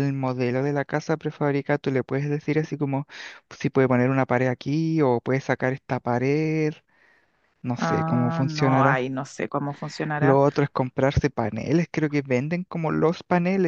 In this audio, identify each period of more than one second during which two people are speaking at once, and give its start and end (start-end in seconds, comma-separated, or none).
7.8-9.1